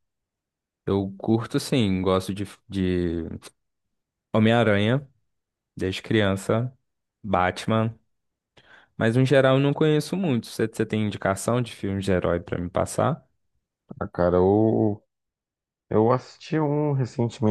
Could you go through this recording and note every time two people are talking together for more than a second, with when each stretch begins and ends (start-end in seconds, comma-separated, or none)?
none